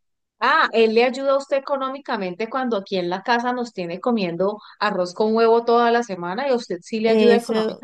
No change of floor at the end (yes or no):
no